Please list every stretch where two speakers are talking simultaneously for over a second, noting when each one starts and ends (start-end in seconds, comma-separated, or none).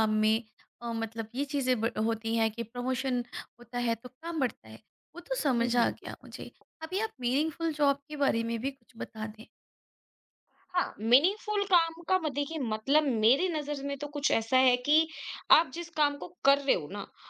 none